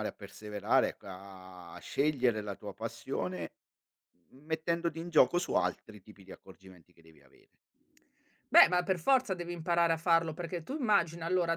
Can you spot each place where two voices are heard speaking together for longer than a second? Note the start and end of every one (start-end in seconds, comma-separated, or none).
none